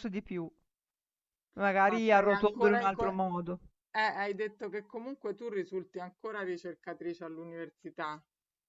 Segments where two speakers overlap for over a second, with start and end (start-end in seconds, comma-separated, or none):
1.8-3.0